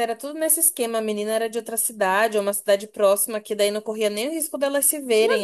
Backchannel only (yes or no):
no